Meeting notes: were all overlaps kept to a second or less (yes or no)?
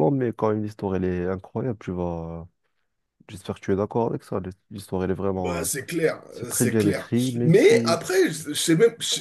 no